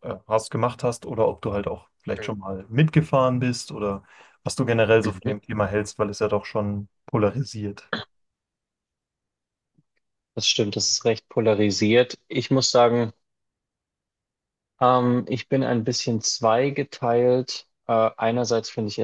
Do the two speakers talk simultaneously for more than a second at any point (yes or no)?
no